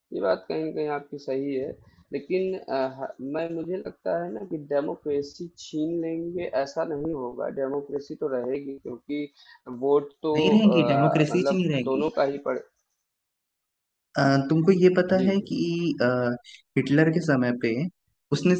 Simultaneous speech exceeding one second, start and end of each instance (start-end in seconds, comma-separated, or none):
10.4-12.0